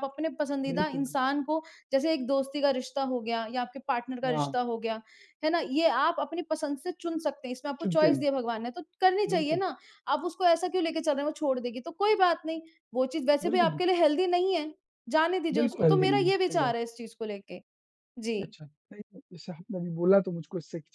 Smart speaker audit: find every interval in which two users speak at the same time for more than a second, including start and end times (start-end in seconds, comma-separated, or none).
15.5-16.8